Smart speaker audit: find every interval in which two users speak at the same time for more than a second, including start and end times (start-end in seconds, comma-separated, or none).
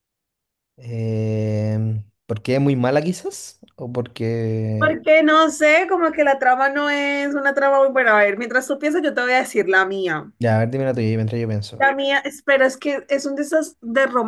none